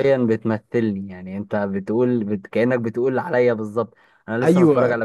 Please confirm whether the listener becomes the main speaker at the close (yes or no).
no